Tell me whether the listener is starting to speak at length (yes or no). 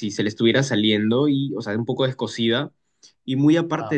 no